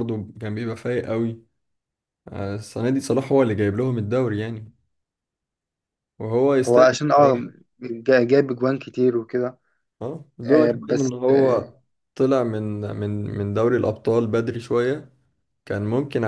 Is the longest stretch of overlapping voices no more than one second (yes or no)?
no